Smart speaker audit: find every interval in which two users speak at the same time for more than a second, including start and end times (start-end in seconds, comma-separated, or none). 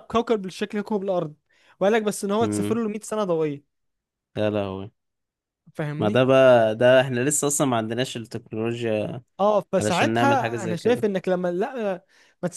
9.8-11.1